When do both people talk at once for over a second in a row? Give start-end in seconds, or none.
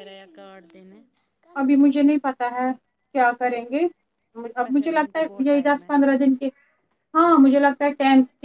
4.6-5.9